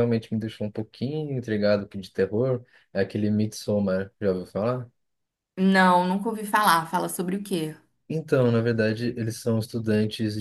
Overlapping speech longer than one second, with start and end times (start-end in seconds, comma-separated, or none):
none